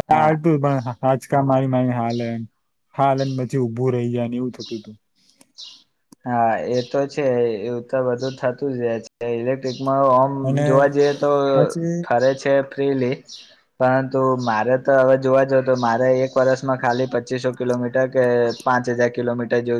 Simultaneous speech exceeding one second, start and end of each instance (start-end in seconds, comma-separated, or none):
none